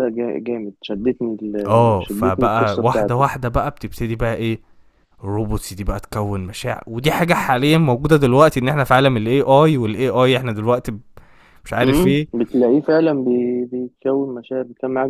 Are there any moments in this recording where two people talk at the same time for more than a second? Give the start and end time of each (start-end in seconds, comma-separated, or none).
2.0-3.2